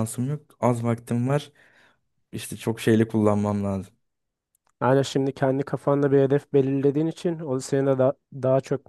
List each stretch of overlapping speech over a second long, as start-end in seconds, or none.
none